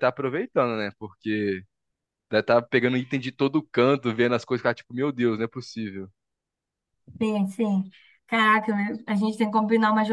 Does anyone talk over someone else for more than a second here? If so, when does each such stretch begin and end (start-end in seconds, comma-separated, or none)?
none